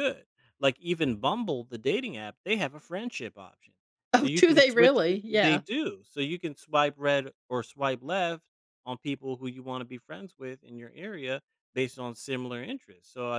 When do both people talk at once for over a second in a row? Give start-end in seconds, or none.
4.2-5.6